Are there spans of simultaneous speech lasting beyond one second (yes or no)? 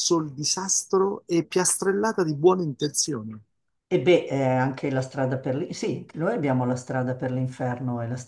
no